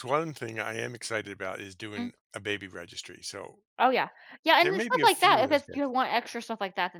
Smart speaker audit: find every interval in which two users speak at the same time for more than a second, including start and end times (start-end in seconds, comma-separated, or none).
4.6-6.0